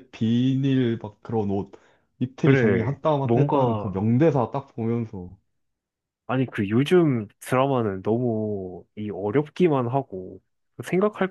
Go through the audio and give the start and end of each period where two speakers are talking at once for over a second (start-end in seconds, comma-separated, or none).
2.4-4.0